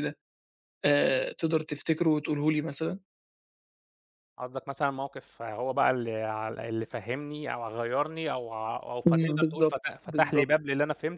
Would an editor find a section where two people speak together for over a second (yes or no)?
yes